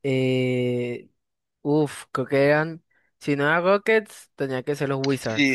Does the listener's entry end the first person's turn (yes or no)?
yes